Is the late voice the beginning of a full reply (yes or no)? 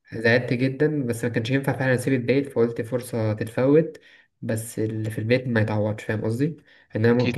no